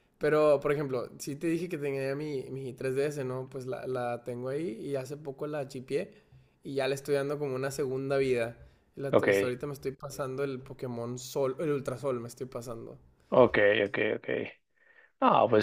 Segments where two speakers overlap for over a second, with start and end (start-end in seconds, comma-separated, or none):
none